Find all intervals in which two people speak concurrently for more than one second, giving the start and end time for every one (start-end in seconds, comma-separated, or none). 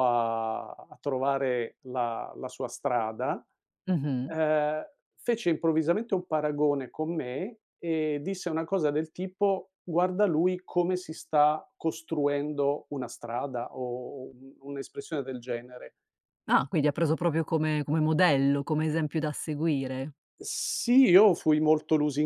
none